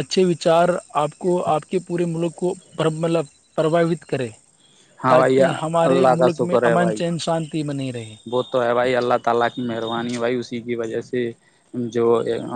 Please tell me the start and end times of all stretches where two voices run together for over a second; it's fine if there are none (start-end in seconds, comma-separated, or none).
5.1-7.0